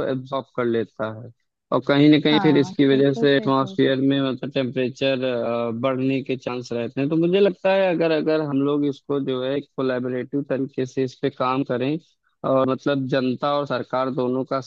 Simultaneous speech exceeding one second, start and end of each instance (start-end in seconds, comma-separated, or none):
2.3-4.0